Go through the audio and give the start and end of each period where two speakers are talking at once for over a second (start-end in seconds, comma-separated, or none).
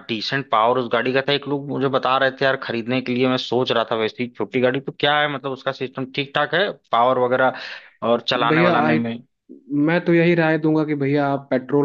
none